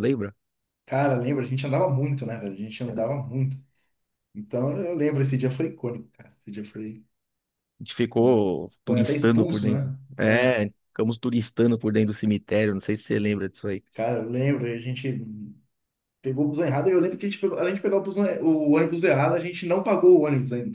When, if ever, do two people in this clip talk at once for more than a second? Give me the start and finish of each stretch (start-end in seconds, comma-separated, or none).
8.8-10.6